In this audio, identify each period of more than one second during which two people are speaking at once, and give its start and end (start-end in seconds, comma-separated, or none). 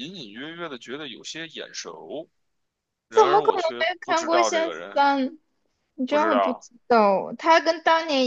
3.1-5.1